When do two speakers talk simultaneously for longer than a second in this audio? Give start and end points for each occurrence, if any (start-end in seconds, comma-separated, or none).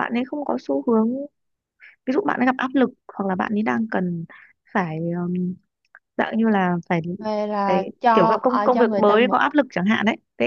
7.7-9.4